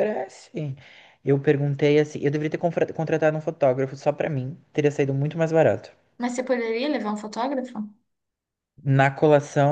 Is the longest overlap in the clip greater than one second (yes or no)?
no